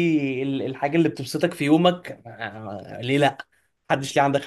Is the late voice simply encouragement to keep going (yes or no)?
no